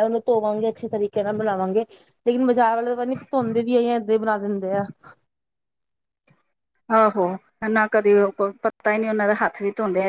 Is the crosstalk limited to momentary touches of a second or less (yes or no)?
yes